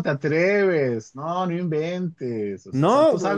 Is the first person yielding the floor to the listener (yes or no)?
no